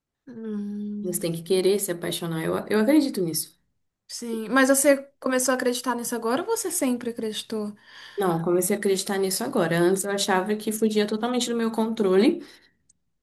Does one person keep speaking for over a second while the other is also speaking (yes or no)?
no